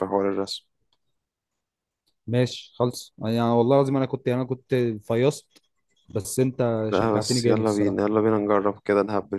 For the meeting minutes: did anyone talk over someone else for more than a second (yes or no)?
yes